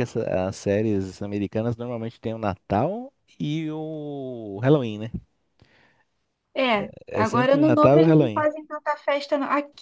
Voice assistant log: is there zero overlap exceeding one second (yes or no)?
no